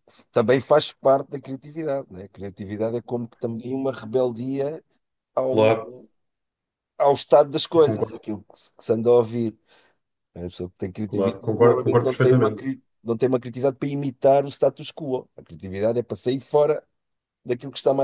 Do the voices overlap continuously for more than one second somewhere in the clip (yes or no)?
yes